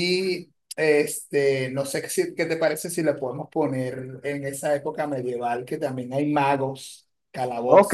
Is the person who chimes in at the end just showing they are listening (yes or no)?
no